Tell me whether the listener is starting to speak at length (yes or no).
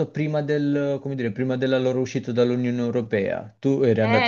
yes